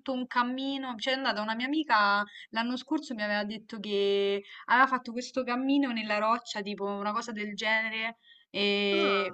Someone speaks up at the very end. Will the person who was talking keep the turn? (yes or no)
yes